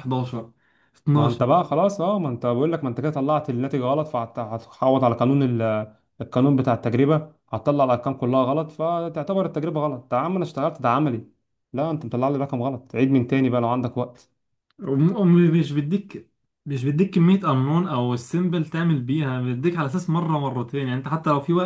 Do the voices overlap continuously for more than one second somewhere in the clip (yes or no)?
no